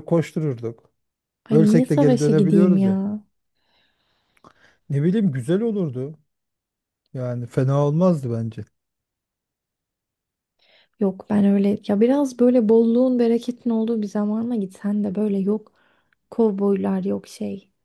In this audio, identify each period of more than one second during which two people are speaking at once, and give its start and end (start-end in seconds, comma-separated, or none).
1.5-3.0